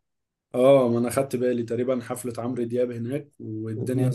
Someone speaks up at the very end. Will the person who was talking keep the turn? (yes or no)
yes